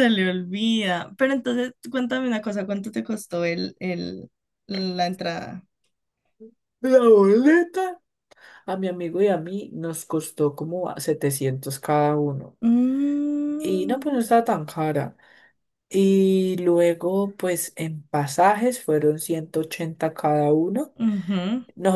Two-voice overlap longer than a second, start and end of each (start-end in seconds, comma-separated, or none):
none